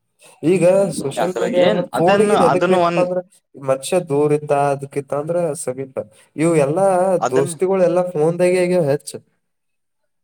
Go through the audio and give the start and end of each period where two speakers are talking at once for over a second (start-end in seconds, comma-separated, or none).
1.2-3.0